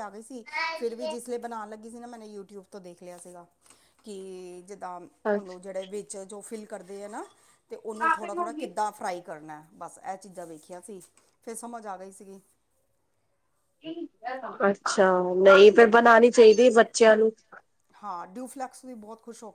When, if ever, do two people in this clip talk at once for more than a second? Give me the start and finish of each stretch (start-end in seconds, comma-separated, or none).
none